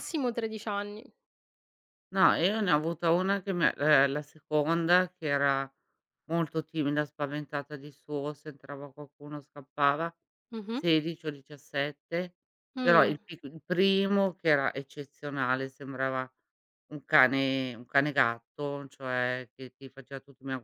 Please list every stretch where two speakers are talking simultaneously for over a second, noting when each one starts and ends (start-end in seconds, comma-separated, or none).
none